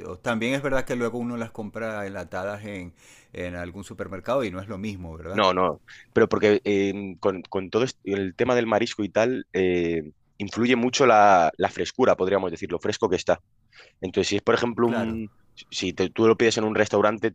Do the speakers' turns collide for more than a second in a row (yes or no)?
no